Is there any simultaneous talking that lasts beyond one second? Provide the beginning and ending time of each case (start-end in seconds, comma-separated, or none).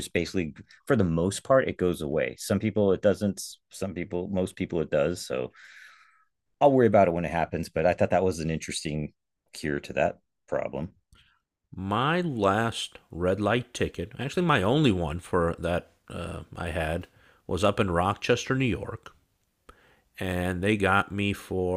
none